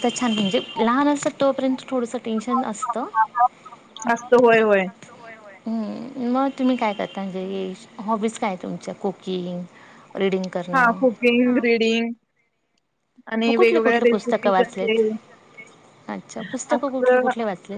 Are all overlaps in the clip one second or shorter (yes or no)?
no